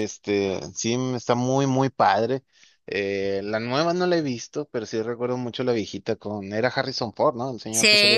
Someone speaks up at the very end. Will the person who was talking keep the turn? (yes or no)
no